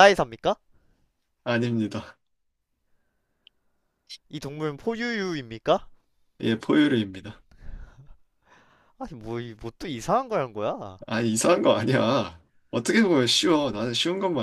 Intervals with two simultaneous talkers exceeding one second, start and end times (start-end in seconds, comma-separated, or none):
none